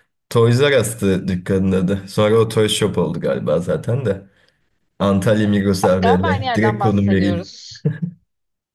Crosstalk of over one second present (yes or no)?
yes